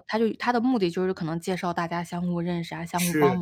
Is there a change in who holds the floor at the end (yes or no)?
yes